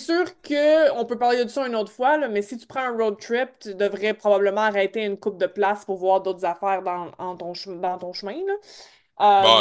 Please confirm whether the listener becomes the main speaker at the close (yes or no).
yes